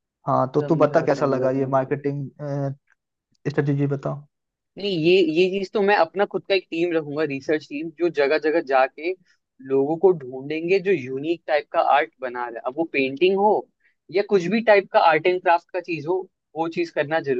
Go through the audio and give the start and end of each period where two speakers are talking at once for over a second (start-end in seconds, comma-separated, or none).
0.6-1.9